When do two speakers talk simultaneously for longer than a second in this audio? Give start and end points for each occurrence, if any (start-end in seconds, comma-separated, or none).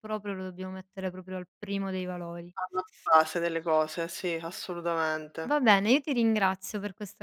none